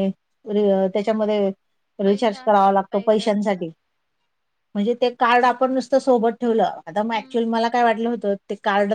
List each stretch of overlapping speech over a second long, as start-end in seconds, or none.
2.0-3.6